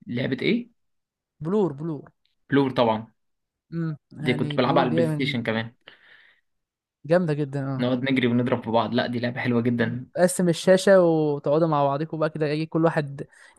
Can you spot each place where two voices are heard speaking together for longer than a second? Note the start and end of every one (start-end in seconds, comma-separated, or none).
4.2-5.4